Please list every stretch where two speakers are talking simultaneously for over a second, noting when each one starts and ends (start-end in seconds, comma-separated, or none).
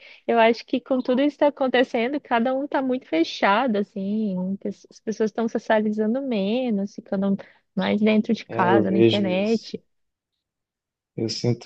8.5-9.7